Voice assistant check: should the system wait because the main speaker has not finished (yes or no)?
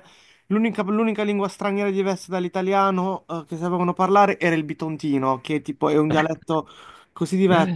yes